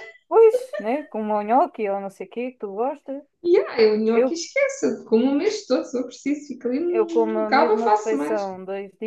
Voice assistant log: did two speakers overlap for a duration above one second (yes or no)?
yes